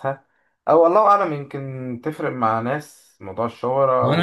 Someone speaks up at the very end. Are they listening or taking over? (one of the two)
taking over